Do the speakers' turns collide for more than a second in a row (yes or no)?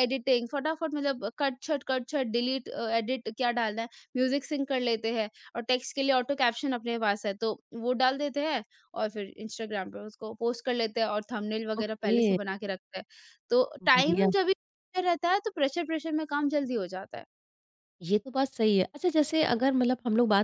no